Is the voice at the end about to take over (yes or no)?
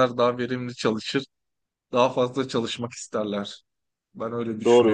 yes